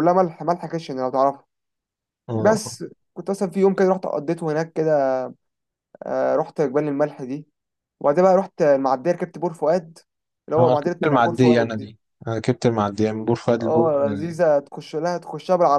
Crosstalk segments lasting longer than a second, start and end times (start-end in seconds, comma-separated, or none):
10.6-11.9